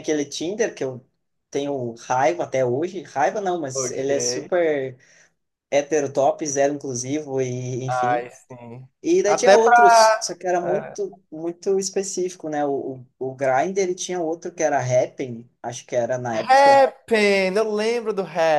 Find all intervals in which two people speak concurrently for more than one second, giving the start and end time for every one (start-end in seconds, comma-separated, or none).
9.2-11.0